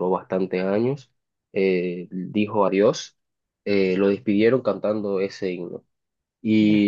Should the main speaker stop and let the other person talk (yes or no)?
no